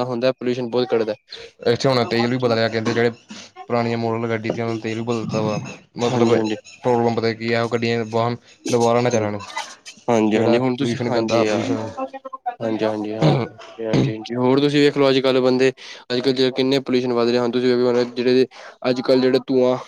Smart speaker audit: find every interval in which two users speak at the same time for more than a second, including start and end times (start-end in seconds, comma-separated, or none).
10.3-12.1